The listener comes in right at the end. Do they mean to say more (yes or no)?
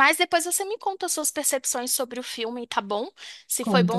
no